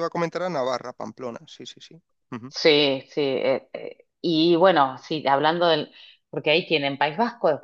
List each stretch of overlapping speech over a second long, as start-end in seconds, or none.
none